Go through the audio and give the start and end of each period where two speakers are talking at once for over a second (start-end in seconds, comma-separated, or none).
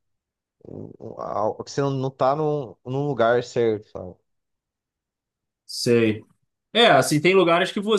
none